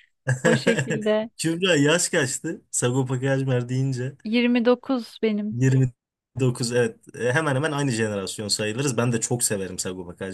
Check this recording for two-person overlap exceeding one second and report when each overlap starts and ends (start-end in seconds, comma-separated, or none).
none